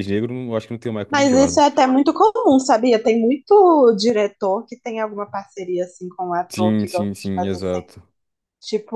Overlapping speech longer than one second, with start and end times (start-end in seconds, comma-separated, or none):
6.5-7.9